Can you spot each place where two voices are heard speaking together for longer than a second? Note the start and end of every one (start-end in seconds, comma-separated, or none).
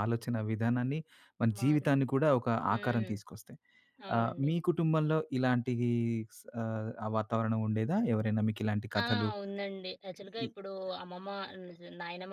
none